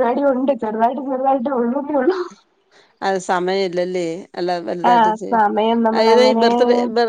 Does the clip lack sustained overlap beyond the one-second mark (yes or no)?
no